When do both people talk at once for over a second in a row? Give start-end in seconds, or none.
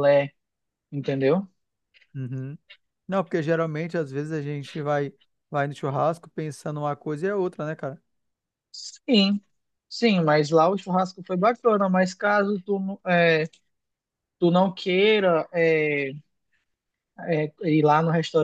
none